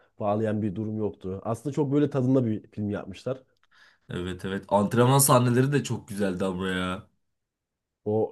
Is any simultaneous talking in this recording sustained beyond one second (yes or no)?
no